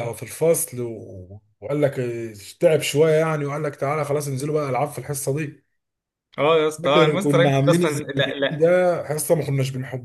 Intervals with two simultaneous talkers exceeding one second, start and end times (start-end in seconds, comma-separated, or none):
6.8-8.7